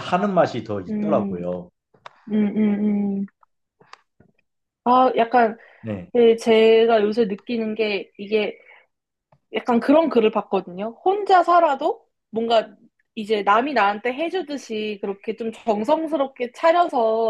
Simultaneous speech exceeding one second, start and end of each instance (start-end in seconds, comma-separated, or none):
none